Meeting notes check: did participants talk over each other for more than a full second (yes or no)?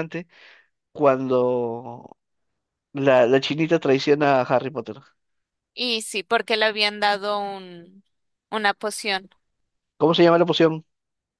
no